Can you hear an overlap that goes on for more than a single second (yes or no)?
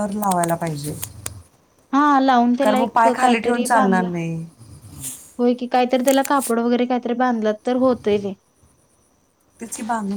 yes